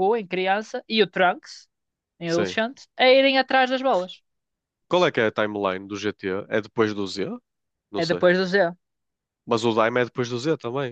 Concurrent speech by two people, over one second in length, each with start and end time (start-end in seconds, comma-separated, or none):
none